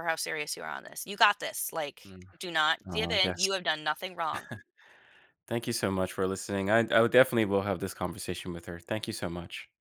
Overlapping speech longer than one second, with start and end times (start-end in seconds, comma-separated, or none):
none